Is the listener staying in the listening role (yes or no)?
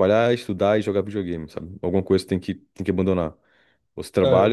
yes